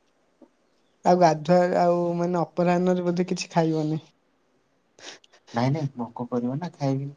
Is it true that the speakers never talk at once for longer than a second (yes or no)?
yes